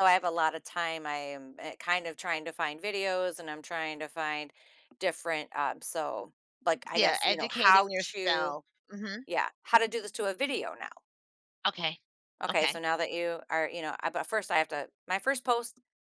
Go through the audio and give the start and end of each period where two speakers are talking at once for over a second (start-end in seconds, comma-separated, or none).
6.9-8.6